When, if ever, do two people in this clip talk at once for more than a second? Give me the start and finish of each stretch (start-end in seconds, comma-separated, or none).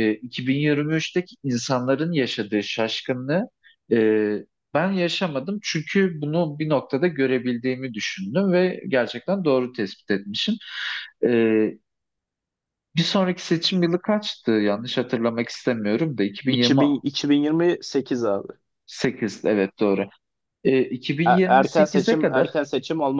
21.3-22.5